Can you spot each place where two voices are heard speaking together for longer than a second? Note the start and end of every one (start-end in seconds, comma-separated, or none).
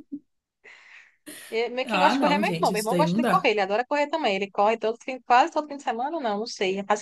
1.8-3.5